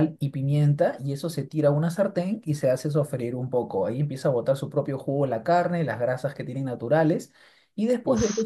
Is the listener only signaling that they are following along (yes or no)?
yes